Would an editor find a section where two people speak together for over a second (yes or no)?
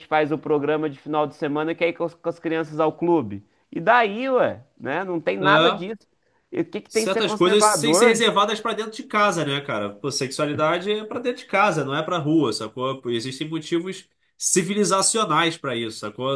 yes